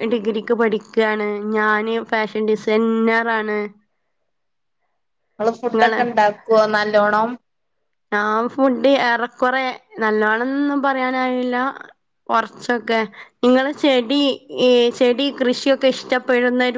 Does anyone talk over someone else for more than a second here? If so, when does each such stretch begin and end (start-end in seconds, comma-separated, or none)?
none